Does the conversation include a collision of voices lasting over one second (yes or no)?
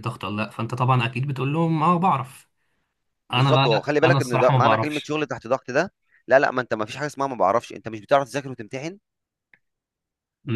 yes